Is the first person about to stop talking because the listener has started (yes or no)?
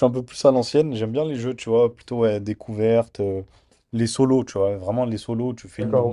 no